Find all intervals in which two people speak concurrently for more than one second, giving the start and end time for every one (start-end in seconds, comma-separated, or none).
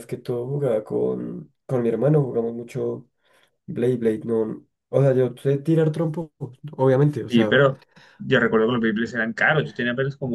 none